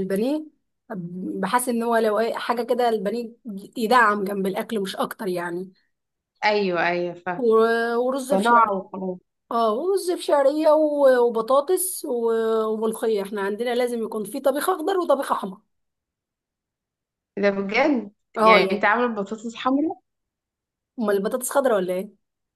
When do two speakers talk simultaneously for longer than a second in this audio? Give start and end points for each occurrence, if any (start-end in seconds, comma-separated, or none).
none